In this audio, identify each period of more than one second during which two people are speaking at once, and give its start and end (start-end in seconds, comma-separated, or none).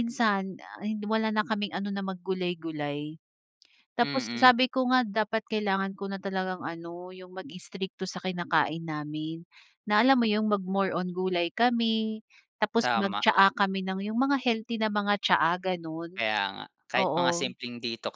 none